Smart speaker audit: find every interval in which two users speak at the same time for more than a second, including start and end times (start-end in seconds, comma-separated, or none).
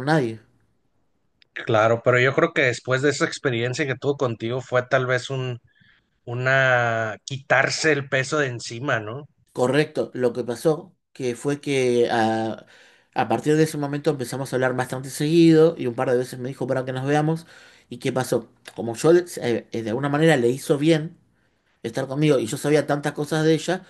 none